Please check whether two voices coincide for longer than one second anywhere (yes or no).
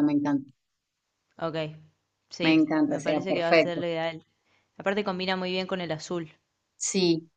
yes